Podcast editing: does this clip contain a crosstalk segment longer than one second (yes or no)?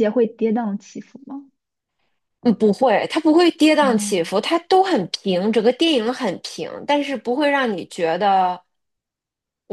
no